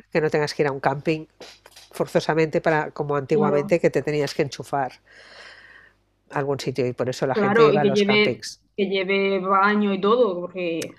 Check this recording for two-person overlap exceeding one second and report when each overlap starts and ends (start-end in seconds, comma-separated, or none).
7.3-8.6